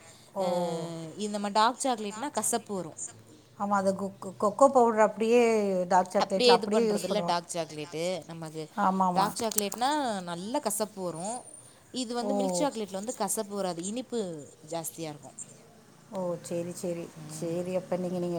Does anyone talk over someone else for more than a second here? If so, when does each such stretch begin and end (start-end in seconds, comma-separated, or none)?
none